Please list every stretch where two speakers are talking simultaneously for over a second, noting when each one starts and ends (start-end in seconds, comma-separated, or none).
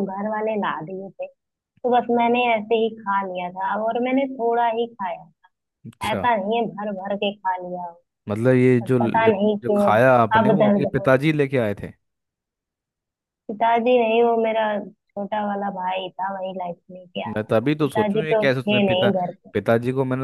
9.6-11.1, 17.3-19.1